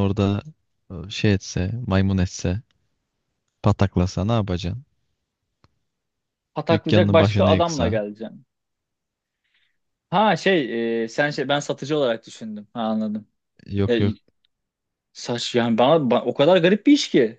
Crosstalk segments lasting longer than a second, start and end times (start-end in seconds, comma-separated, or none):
6.7-8.0